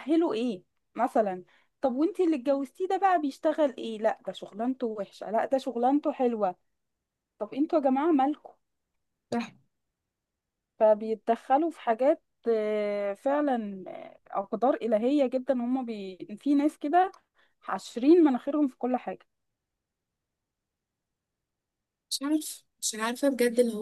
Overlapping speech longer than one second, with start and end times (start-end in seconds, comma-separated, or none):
none